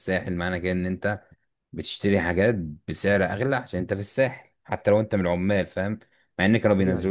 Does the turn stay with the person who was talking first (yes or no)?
yes